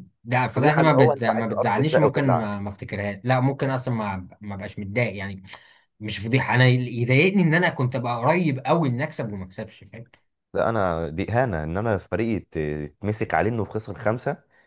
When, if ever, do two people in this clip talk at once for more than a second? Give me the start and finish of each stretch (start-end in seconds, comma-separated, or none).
0.5-2.6